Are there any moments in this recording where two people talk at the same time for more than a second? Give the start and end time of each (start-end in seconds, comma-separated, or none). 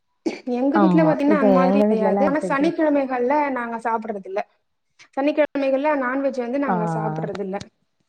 0.8-2.8